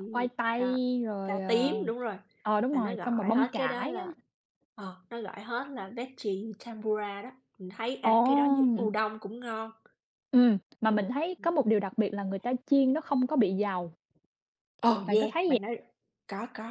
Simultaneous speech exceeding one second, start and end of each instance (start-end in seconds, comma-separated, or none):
2.7-4.0